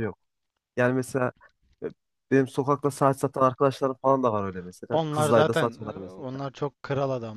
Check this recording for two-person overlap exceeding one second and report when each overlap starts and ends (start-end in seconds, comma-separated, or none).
4.9-6.2